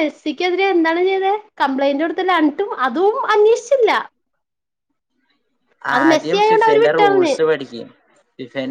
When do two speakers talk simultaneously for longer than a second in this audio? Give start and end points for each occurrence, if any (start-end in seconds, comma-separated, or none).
6.0-7.3